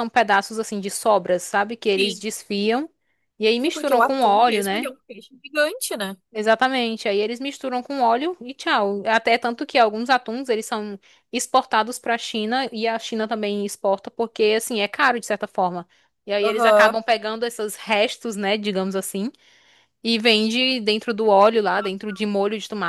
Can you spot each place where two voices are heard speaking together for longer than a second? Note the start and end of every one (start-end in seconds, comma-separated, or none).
3.6-4.9